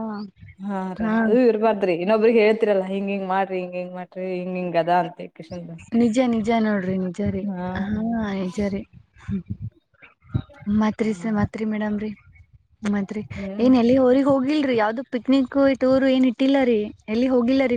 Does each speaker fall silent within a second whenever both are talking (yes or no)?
yes